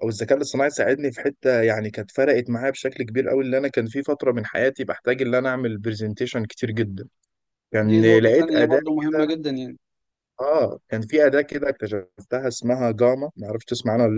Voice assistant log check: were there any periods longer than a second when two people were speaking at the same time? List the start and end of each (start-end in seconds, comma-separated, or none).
7.9-9.3